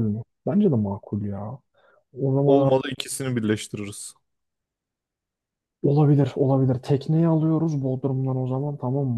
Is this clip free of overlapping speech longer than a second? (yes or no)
yes